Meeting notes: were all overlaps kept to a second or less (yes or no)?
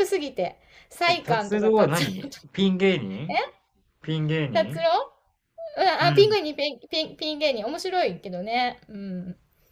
no